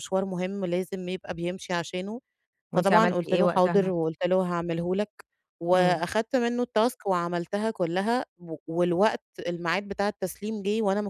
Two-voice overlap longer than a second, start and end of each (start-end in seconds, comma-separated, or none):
2.7-3.9